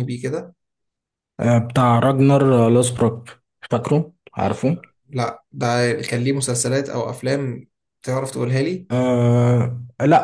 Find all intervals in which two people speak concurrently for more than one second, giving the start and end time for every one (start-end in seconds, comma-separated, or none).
none